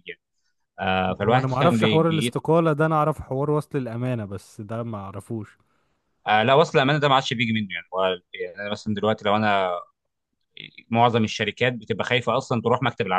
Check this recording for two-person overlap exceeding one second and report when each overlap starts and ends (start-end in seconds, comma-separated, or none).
1.1-2.4